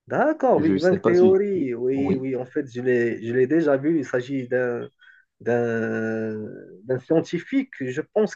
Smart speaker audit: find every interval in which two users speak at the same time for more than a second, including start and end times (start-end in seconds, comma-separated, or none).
0.5-2.3